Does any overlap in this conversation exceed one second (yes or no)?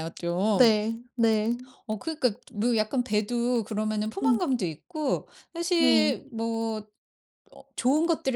no